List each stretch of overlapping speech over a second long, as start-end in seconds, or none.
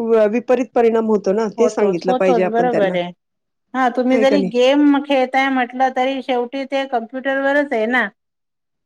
1.6-2.9